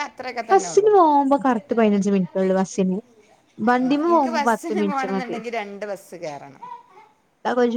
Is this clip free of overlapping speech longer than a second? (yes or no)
no